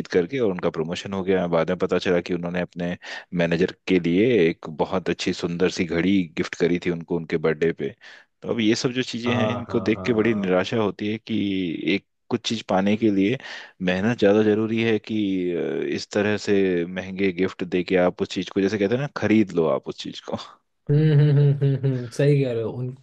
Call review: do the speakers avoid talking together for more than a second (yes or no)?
no